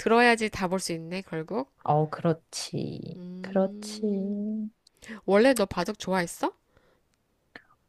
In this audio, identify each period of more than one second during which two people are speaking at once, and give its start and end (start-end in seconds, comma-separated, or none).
3.2-4.5